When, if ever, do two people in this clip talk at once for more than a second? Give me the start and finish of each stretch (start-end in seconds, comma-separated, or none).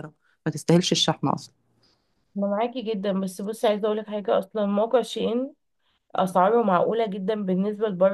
none